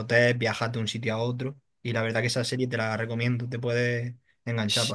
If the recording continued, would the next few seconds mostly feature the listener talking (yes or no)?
yes